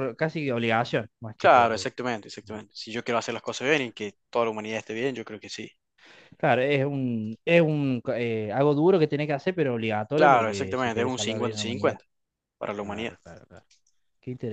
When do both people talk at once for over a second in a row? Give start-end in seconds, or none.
10.2-12.0